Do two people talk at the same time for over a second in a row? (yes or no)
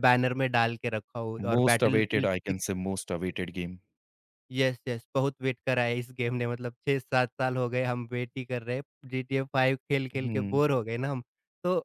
yes